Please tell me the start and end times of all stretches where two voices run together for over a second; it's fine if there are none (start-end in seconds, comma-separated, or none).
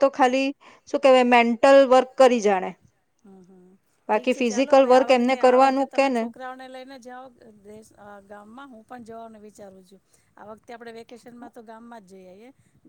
4.1-6.2